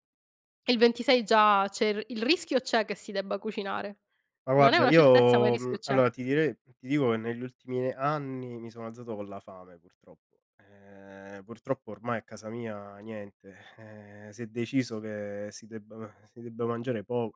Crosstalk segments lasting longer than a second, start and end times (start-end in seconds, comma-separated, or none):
4.5-6.0